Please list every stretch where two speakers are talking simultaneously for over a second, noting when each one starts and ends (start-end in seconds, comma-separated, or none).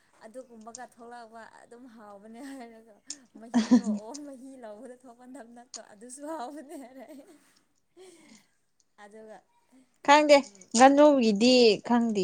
none